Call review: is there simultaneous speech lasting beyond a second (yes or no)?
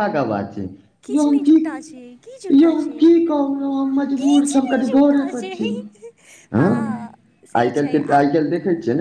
yes